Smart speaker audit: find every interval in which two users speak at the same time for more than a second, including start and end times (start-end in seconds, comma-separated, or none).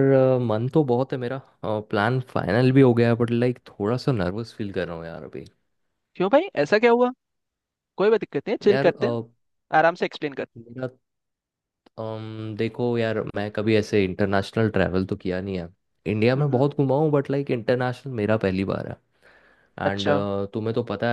none